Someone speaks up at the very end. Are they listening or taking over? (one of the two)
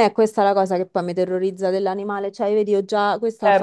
listening